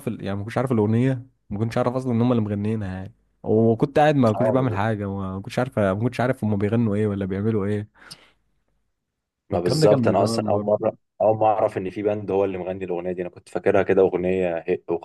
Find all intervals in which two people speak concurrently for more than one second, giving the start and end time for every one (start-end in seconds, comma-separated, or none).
9.5-10.7